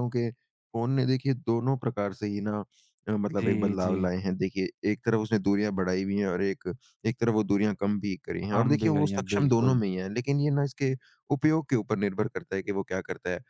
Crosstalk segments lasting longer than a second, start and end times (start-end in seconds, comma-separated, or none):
8.5-9.8